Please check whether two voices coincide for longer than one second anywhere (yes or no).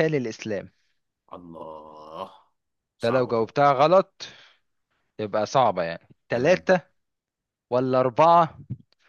no